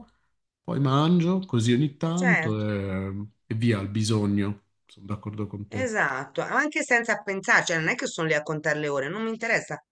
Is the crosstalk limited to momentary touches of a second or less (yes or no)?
yes